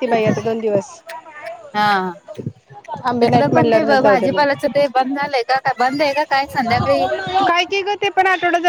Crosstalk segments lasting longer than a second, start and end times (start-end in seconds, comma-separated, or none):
3.1-4.4